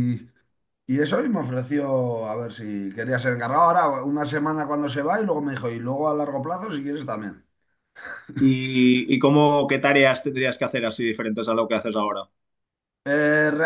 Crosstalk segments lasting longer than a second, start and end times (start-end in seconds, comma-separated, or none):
none